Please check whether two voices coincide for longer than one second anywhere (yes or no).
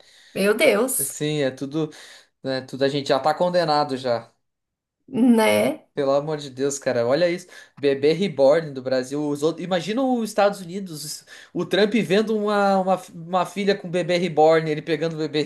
no